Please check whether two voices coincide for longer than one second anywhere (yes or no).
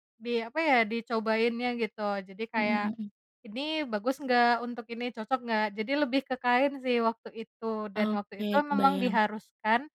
yes